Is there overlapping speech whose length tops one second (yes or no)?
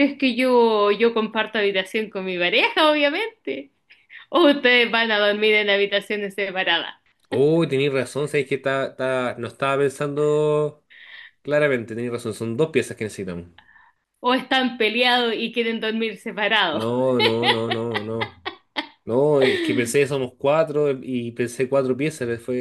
no